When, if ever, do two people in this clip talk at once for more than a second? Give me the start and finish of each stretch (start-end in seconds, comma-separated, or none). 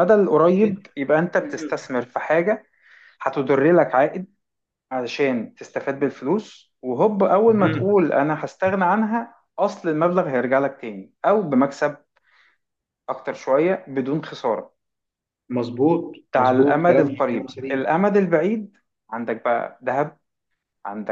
16.3-17.9